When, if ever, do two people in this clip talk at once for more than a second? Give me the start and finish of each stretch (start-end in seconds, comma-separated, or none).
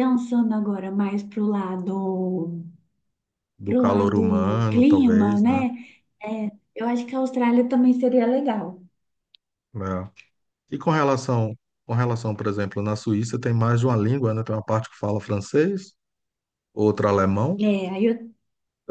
3.6-5.7